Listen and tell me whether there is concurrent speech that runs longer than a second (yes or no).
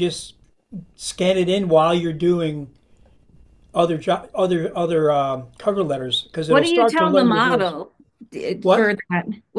yes